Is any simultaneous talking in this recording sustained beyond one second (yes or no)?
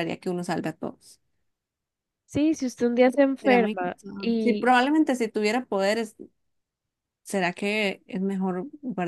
yes